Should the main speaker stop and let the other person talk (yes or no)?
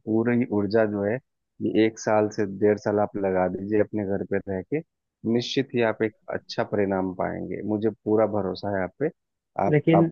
no